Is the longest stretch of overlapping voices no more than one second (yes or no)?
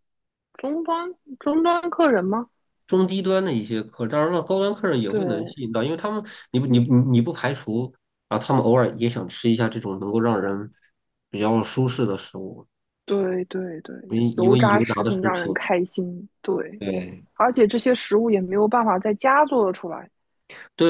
no